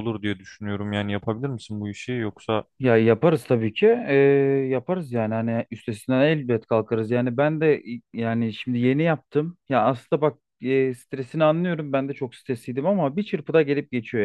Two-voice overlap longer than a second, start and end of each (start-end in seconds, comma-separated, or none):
none